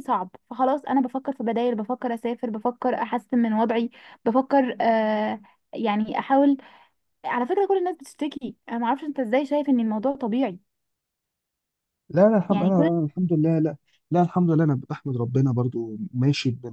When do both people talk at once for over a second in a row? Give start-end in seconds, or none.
none